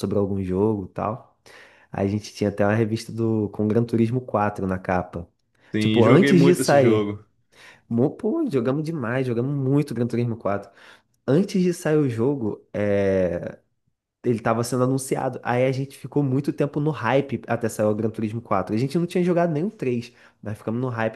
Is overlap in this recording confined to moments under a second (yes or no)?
no